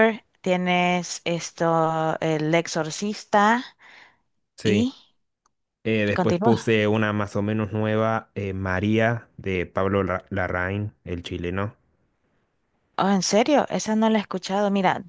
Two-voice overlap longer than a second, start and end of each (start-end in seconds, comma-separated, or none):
none